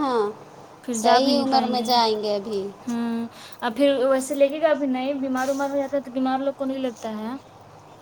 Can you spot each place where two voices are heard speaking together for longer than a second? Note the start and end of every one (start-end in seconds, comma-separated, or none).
none